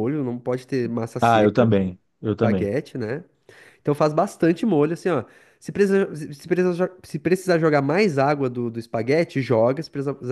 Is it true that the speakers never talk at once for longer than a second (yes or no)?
yes